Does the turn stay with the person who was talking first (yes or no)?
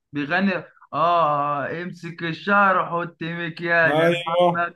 no